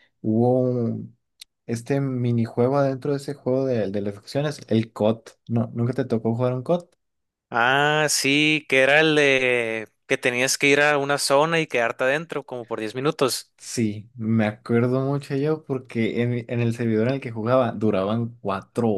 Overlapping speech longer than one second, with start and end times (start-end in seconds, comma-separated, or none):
none